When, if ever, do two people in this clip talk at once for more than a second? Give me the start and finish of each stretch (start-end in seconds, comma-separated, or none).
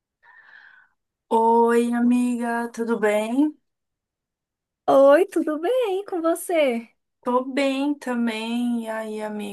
none